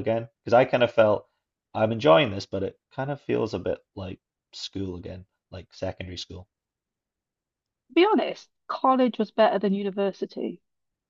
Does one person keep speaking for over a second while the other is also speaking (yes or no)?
no